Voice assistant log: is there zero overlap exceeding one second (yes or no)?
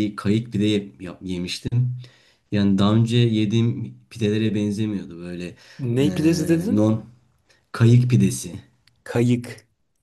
yes